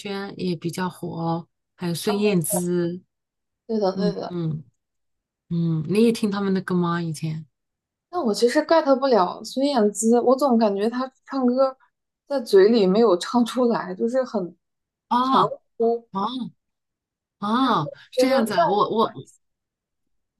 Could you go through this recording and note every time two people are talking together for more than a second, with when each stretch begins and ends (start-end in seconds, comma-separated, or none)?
17.6-19.1